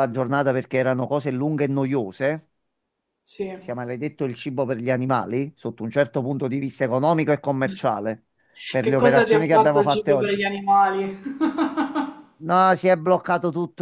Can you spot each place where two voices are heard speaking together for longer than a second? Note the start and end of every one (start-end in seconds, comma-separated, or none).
8.8-10.4